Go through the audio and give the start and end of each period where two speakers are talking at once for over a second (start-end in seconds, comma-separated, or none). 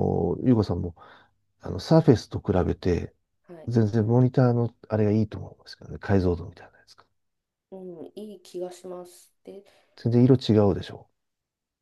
none